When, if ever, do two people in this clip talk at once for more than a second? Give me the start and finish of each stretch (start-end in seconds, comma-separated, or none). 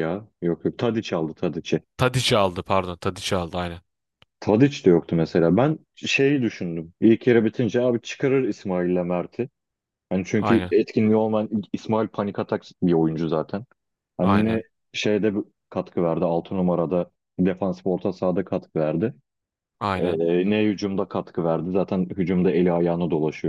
none